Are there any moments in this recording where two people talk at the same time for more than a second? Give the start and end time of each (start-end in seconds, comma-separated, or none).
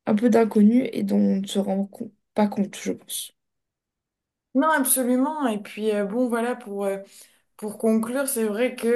none